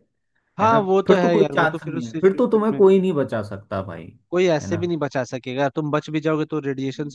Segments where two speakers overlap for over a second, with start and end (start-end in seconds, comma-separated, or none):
0.6-2.8